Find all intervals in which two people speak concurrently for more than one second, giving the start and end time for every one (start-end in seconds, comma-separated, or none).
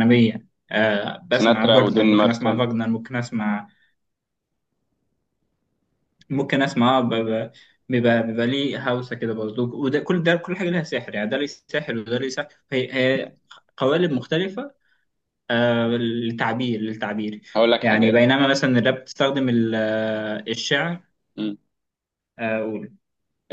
1.3-2.6